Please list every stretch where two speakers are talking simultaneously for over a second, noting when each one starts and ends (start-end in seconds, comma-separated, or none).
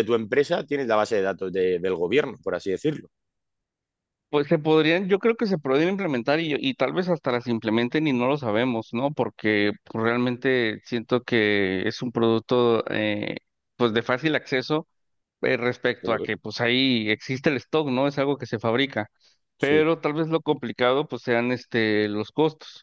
none